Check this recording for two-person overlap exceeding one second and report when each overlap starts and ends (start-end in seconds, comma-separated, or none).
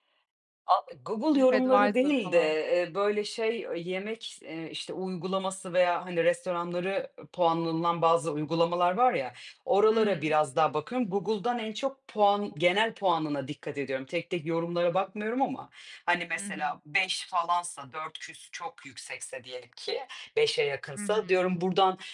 1.3-2.6